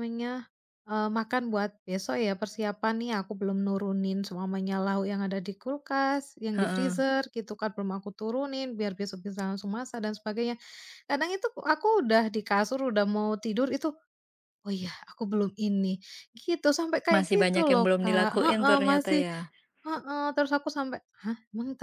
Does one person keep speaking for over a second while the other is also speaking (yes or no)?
yes